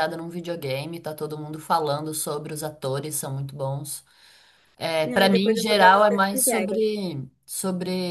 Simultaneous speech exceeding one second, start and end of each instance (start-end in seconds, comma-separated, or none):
5.2-6.8